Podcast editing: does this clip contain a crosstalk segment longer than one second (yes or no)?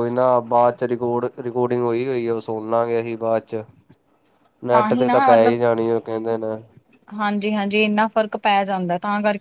no